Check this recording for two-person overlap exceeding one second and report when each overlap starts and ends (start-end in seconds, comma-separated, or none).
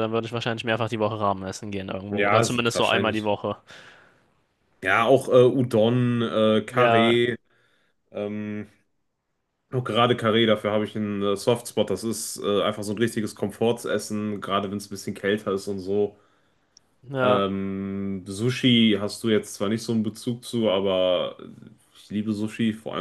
2.1-3.3